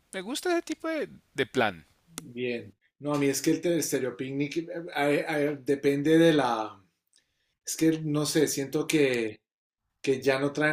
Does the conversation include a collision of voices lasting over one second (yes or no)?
no